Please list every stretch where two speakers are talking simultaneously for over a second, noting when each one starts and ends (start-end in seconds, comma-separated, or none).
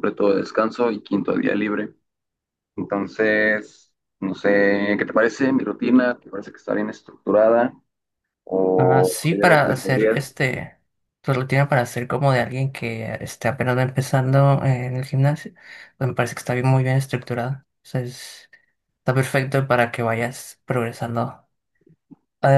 8.8-10.3